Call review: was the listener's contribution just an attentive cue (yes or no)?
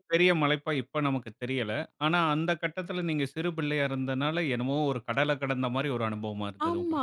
no